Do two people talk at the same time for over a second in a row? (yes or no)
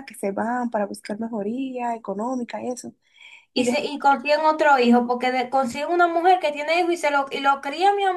no